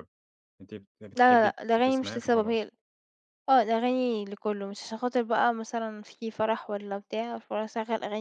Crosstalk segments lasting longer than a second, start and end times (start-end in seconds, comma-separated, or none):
1.2-2.7